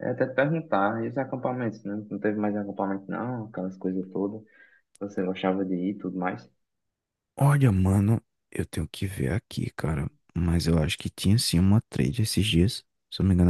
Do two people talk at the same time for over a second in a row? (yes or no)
no